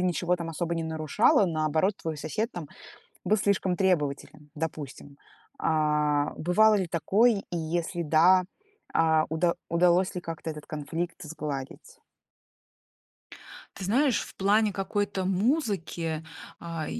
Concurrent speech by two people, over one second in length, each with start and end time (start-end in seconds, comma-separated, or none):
none